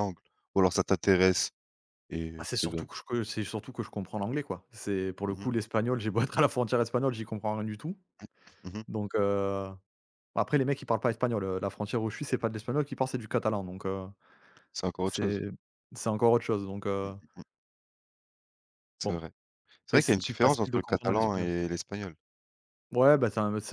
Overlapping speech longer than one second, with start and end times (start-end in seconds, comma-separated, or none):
19.9-21.5